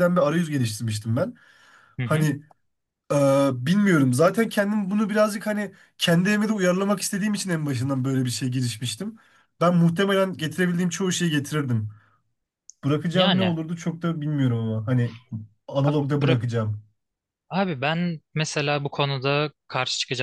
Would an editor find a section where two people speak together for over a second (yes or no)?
no